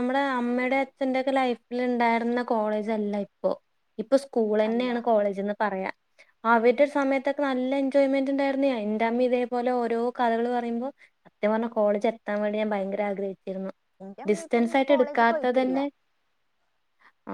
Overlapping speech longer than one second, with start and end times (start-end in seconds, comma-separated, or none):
14.3-15.8